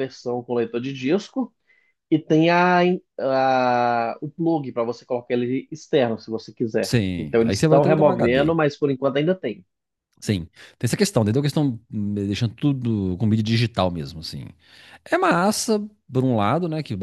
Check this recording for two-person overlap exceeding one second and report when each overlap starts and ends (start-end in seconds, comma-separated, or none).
6.8-8.6